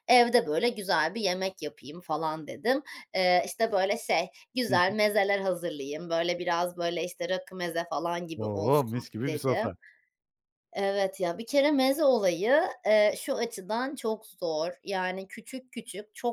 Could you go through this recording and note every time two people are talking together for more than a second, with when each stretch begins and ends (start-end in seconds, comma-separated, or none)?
8.4-9.7